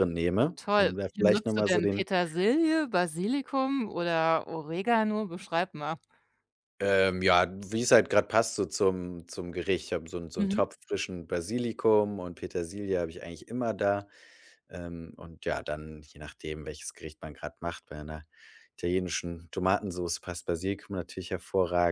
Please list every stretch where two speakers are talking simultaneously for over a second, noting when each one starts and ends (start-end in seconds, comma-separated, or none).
0.6-2.0